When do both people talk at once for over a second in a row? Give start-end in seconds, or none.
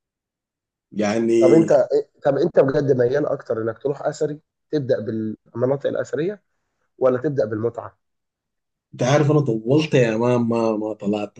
none